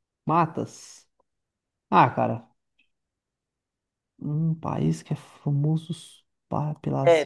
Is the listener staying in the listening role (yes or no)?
no